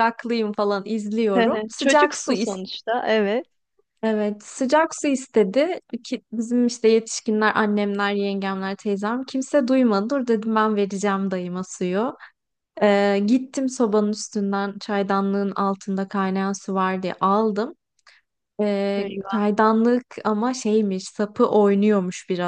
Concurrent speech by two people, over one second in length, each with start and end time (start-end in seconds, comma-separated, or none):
1.3-2.6